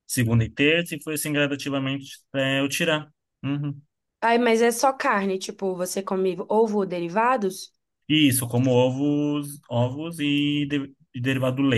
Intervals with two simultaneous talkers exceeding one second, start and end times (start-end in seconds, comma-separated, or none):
none